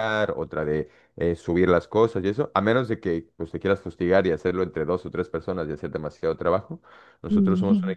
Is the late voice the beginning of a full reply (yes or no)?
no